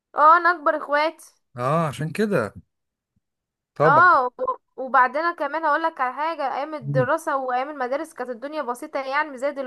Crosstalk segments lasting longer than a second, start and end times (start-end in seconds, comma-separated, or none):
none